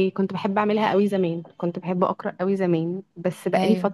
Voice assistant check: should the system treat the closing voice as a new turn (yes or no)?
no